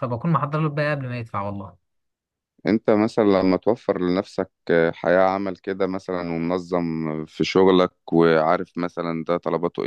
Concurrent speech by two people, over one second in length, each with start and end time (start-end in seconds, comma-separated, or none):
none